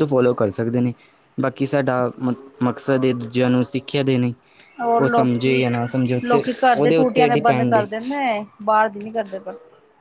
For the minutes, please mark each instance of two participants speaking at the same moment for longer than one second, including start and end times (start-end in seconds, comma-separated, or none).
5.0-7.8